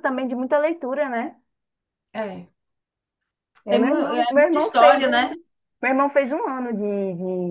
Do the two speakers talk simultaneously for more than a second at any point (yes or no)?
yes